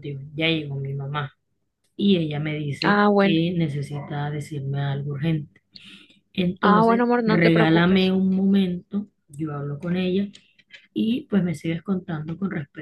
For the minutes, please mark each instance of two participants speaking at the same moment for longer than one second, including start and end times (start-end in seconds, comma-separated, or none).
6.6-8.1